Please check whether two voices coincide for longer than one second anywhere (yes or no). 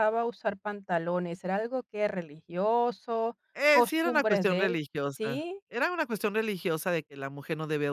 yes